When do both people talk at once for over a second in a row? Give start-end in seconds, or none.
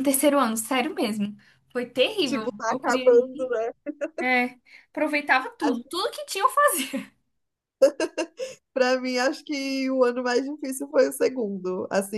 2.2-3.5